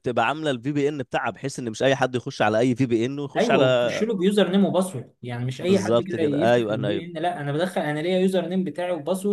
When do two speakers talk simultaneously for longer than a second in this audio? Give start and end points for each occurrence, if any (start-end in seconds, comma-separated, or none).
5.6-7.0